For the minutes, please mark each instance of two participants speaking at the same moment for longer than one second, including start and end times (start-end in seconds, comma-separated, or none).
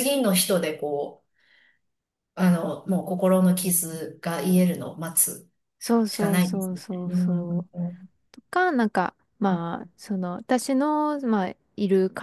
6.1-7.7